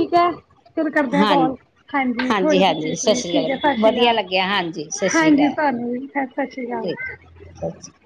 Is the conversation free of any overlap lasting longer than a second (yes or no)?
no